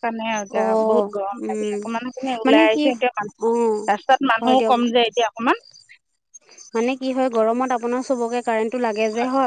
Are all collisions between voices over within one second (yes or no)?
yes